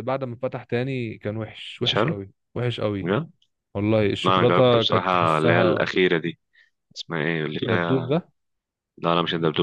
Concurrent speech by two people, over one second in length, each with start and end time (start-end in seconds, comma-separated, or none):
4.2-5.9